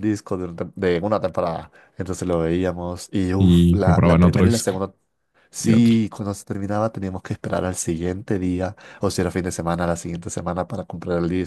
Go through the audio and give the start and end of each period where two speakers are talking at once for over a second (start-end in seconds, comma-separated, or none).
3.4-4.7